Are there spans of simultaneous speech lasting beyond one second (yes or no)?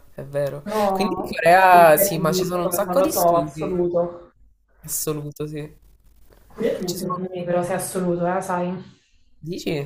yes